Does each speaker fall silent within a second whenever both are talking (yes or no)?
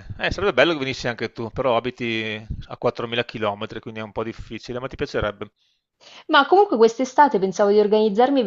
yes